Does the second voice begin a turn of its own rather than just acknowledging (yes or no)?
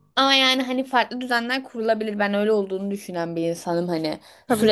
no